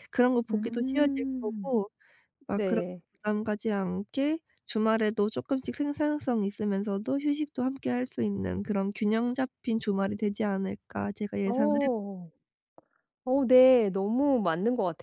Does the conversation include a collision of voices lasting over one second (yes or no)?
yes